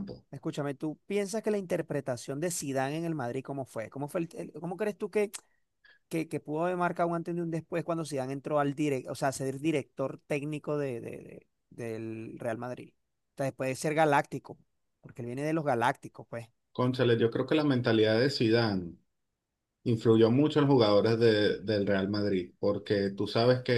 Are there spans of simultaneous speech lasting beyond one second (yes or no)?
no